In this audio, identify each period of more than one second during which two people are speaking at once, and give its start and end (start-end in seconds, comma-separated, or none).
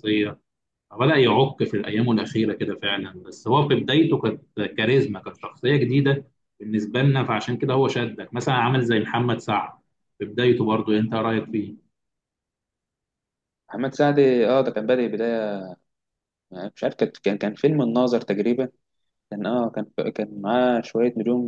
none